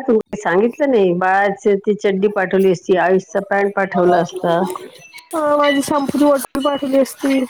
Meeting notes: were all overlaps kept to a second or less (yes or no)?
yes